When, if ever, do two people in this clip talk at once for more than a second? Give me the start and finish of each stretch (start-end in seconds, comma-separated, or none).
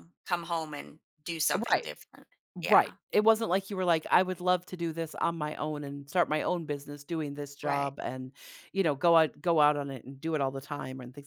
none